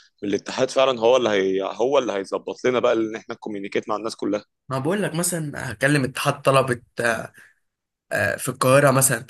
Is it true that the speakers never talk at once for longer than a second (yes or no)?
yes